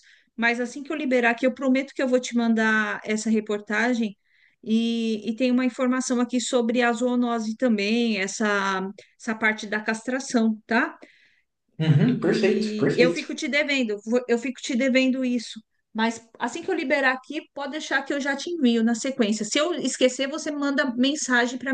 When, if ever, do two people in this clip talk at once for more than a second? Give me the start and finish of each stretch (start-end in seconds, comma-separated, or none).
12.0-13.3